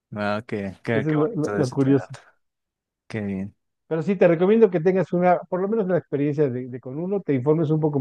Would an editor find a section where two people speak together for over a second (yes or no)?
yes